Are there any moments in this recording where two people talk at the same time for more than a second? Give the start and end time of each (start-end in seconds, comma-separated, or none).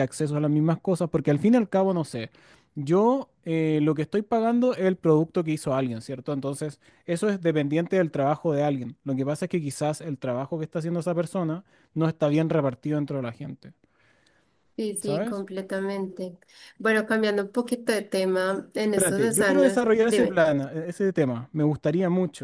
18.9-20.4